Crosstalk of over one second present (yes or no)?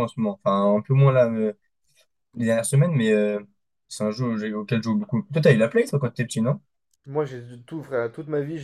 no